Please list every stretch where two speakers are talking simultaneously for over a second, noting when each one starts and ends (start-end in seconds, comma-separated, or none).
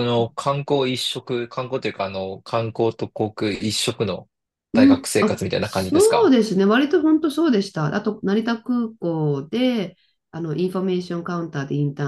4.7-6.3